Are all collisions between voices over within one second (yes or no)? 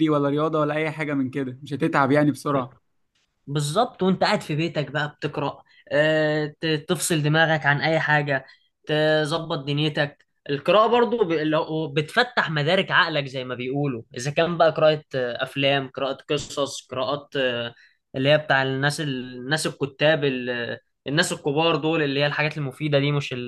yes